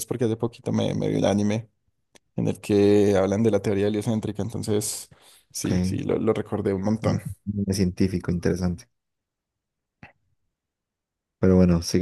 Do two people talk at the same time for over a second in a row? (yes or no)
no